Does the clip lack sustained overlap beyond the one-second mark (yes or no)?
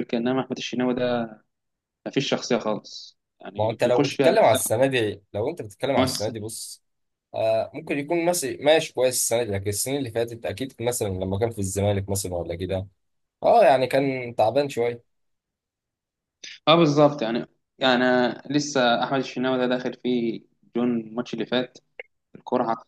no